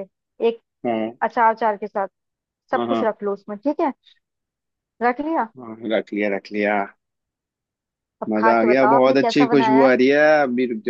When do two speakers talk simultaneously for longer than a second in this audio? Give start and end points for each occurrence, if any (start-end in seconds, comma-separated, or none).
8.3-9.9